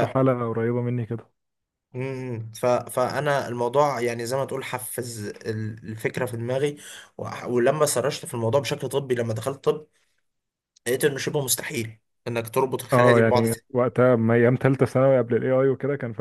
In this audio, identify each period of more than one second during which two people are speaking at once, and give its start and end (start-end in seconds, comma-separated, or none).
none